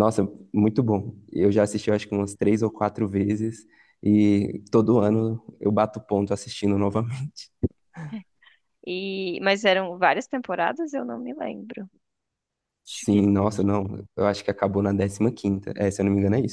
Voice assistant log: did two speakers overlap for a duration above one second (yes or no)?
no